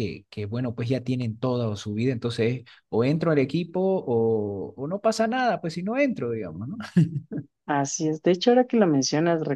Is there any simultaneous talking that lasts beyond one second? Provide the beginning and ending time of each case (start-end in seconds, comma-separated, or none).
none